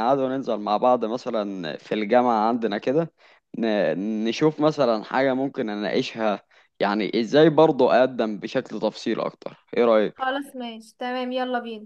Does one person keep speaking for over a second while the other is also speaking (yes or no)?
no